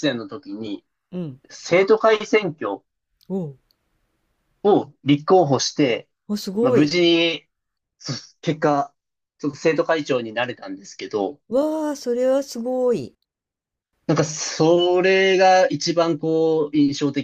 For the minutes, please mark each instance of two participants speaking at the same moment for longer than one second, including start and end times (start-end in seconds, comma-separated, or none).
none